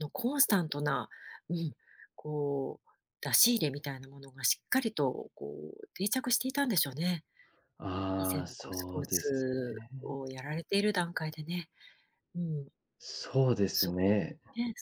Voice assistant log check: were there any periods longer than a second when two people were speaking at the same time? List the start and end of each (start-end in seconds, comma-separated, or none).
8.2-9.9